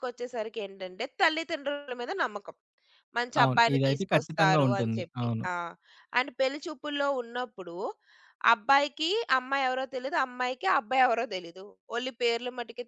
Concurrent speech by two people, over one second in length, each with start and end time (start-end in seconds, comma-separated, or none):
3.4-5.4